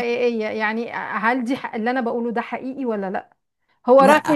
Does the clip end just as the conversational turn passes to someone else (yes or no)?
no